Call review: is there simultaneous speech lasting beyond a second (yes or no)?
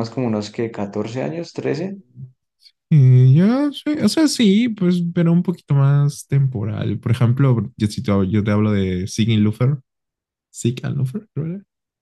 no